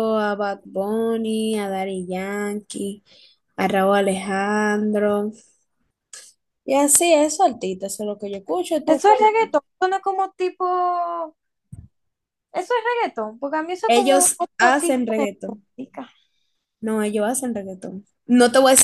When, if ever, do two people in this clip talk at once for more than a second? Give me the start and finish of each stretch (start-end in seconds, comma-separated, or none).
13.9-15.3